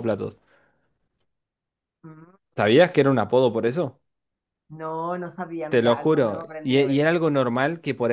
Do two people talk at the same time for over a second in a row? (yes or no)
yes